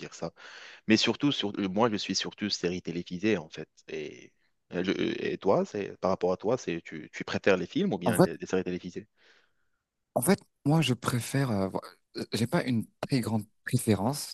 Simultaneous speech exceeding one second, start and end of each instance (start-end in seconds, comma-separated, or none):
none